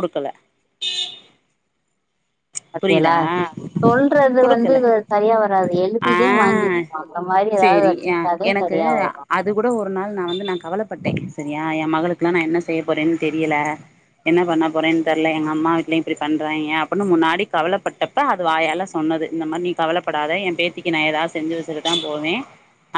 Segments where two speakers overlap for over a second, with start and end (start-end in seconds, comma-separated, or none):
none